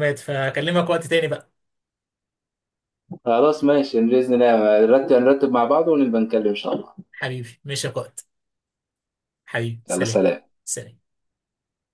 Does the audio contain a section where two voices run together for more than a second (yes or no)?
no